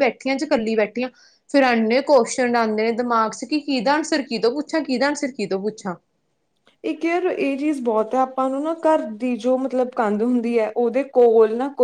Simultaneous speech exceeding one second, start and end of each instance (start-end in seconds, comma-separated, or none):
none